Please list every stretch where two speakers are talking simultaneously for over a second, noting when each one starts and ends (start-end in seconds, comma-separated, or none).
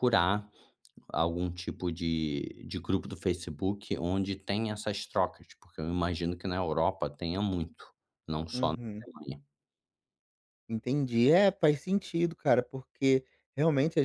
none